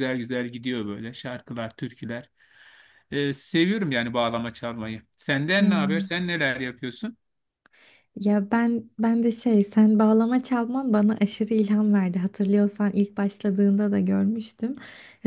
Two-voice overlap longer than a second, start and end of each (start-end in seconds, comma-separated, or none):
none